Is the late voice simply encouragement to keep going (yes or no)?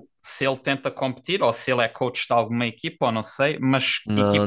yes